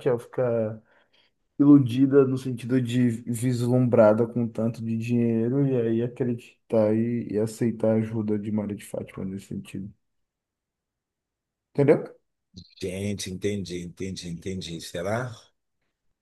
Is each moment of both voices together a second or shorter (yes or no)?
yes